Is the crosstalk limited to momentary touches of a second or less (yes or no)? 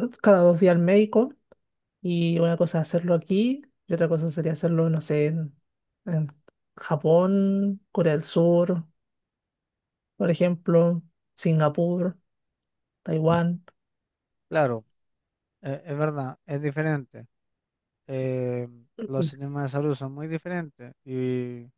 yes